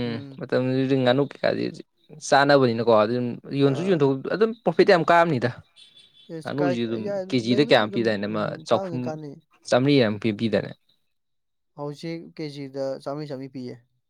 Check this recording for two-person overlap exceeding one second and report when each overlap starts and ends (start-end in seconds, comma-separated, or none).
6.4-9.0